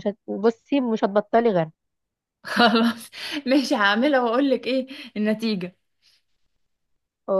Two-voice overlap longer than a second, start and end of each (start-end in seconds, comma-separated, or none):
none